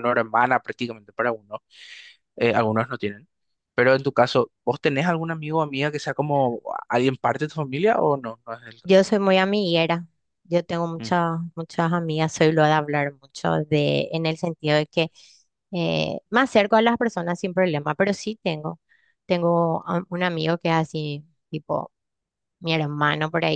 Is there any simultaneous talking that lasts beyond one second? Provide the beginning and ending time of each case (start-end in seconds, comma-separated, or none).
none